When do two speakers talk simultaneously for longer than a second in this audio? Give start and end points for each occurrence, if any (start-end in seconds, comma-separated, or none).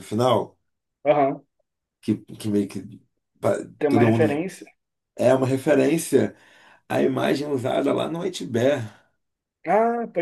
none